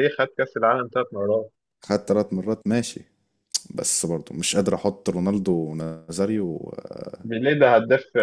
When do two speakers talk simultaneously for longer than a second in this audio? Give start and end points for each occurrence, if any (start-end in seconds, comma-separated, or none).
none